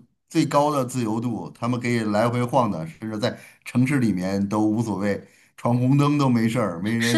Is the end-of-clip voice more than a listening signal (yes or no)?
yes